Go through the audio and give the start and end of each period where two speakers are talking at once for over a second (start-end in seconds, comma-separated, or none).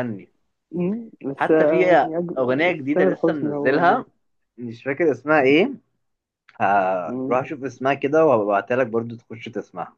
1.4-4.0